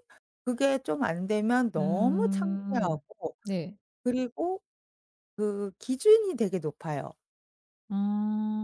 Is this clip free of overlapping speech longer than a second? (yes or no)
no